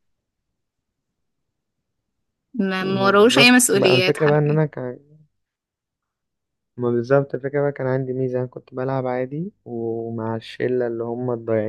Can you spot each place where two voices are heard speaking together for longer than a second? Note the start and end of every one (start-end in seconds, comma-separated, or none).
2.8-4.6